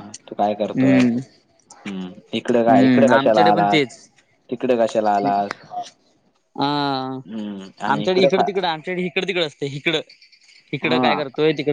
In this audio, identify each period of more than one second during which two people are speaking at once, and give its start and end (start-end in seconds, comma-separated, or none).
2.5-3.8